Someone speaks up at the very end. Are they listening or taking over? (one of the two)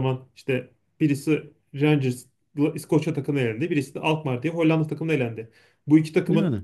listening